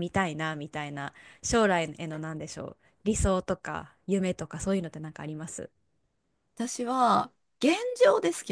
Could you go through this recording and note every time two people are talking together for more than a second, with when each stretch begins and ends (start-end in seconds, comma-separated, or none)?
none